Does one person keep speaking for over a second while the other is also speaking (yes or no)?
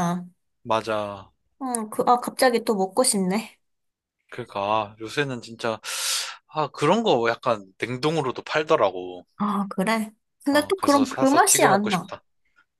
yes